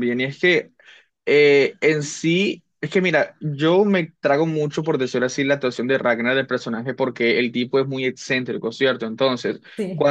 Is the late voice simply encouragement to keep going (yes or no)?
yes